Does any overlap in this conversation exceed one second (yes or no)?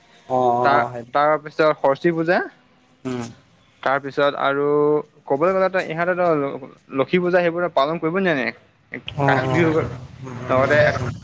yes